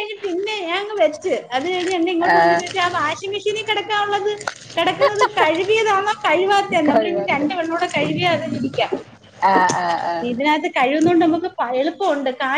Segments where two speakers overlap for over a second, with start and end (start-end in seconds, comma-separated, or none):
none